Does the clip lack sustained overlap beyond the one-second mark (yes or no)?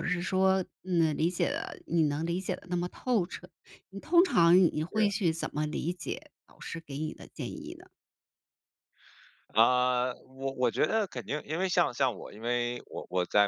yes